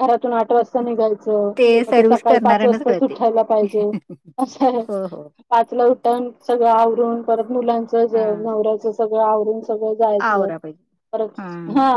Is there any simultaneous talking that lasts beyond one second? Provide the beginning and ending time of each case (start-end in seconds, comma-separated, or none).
1.9-3.2